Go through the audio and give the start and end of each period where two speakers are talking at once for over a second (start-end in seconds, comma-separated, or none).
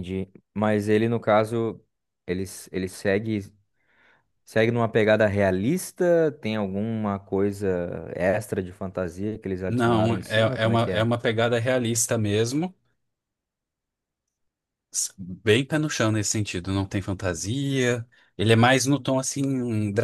9.7-11.1